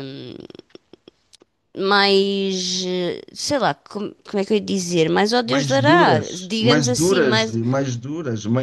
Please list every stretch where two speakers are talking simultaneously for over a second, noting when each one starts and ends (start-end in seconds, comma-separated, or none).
5.4-7.6